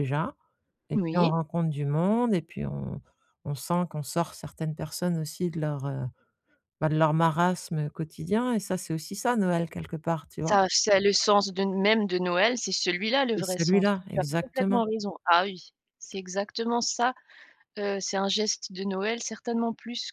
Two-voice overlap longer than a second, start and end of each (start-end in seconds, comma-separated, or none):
13.4-14.8